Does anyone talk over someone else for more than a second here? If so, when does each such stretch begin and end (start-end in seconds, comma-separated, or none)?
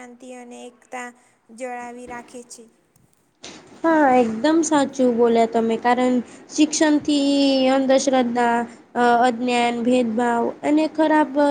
none